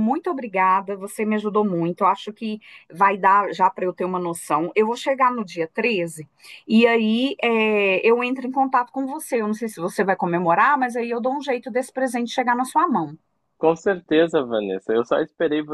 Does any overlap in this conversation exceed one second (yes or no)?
no